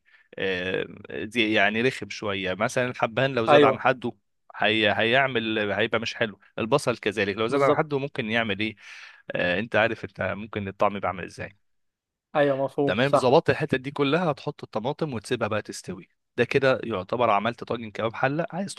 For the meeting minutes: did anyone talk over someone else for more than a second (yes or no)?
no